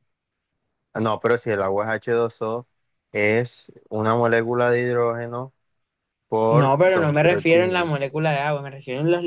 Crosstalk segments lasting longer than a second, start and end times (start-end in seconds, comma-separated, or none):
6.5-7.9